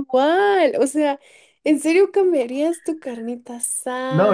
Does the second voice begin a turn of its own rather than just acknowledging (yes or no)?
yes